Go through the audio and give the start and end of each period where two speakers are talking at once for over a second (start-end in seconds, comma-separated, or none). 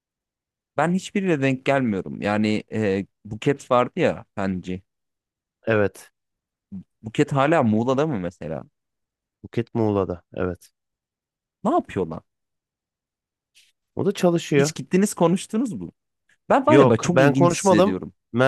16.7-18.0